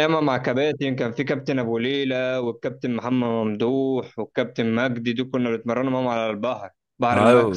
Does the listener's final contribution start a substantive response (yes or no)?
yes